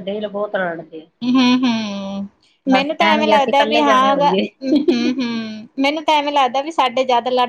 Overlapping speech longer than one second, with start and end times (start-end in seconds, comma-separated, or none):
2.9-4.4